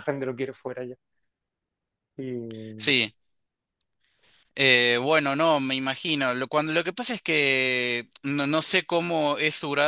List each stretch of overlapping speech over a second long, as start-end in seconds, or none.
none